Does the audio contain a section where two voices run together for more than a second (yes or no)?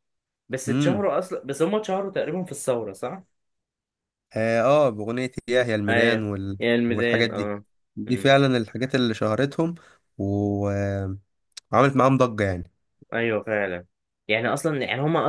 yes